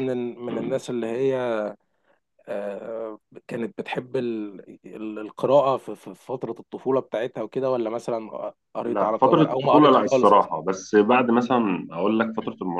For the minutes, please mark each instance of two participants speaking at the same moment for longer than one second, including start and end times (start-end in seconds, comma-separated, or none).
8.8-10.5